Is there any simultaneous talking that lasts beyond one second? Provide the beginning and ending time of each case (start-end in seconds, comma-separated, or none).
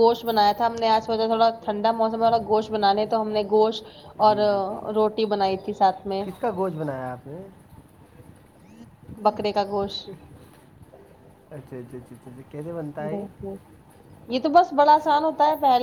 none